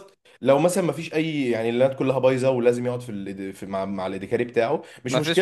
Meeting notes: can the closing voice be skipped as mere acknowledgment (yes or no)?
yes